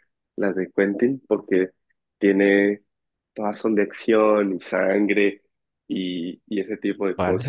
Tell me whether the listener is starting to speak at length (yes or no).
yes